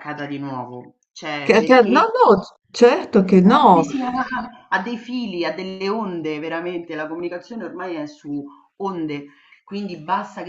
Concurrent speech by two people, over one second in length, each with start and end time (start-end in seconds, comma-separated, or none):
none